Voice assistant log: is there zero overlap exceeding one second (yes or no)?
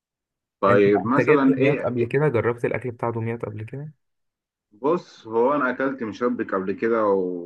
no